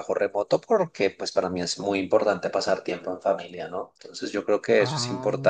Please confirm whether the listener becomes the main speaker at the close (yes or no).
no